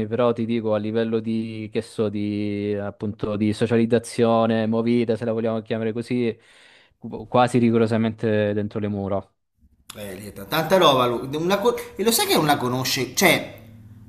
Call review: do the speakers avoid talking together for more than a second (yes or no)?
yes